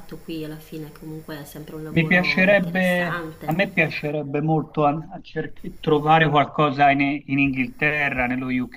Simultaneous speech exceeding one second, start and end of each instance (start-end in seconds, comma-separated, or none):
1.9-3.8